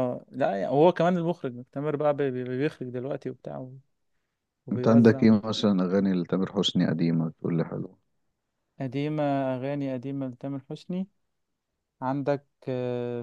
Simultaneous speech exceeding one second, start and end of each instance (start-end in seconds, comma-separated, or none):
none